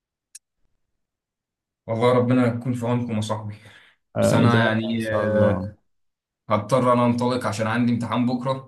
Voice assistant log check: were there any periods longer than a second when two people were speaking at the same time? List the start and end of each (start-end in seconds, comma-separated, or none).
4.2-5.7